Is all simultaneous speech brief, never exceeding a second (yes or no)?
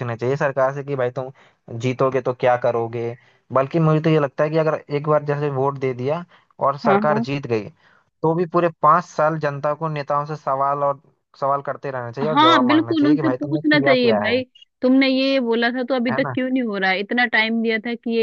no